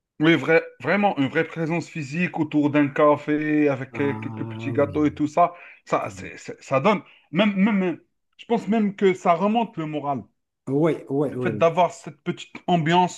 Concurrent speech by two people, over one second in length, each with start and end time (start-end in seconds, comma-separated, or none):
3.9-5.2